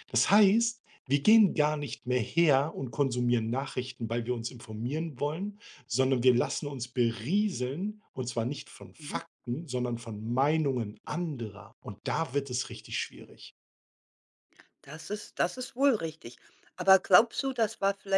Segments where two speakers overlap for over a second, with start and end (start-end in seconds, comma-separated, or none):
none